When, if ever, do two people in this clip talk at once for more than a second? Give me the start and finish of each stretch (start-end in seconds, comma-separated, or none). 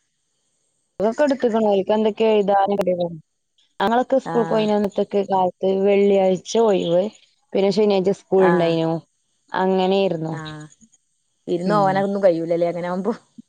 none